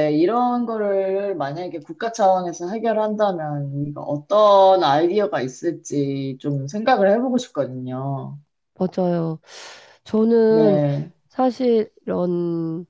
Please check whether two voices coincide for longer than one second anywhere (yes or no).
no